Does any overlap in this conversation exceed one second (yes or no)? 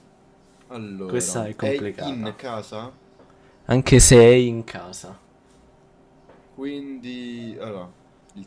yes